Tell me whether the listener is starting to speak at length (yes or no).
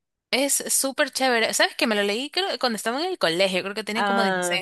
no